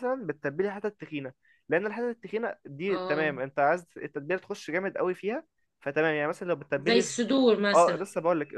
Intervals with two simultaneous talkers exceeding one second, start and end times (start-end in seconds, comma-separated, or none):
none